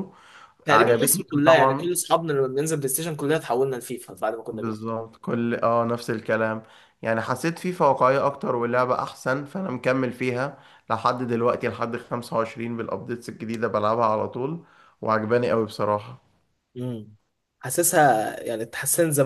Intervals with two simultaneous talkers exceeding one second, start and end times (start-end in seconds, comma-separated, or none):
0.7-1.9